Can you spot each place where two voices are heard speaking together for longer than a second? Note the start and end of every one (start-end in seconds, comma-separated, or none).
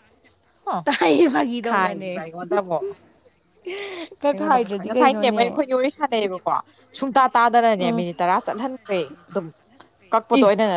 none